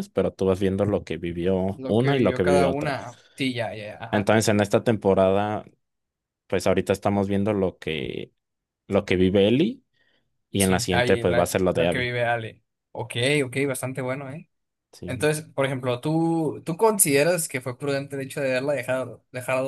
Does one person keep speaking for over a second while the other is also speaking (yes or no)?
yes